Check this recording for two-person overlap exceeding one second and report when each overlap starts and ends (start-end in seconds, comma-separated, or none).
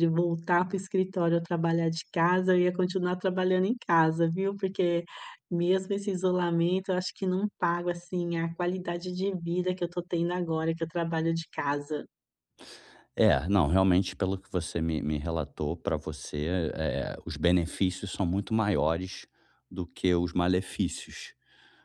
none